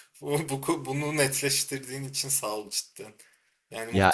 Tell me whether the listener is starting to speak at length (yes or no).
no